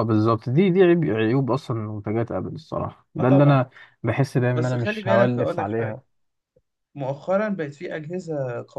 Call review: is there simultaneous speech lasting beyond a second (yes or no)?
yes